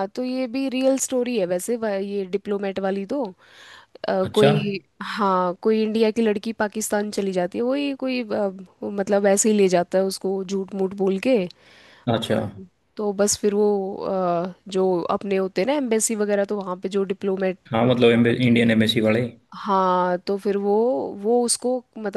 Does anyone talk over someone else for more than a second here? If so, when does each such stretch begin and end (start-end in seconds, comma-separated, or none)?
none